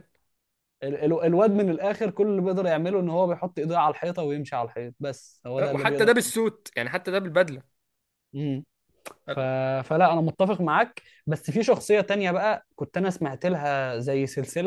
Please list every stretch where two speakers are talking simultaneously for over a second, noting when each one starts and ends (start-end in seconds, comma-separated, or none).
none